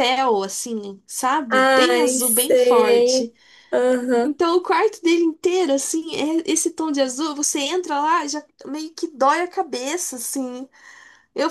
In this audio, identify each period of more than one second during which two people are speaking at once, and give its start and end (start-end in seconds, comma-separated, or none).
1.5-3.3